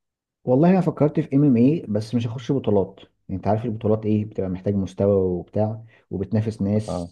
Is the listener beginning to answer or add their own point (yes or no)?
no